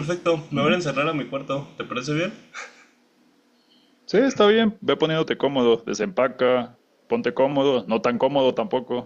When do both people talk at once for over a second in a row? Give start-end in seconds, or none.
none